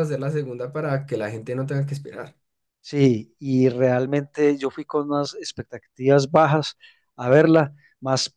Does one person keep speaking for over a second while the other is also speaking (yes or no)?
no